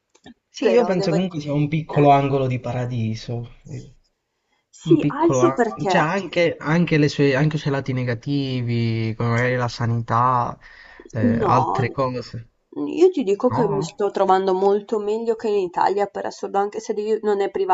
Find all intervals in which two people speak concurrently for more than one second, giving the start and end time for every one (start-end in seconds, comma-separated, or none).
0.6-2.1, 4.9-6.1